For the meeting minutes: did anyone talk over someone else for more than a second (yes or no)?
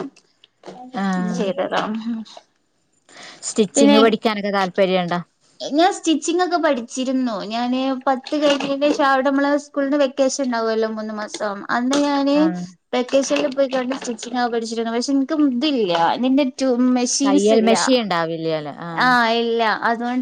no